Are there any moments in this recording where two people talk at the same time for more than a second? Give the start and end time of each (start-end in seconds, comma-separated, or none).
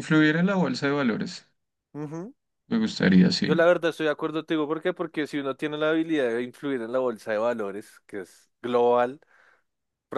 none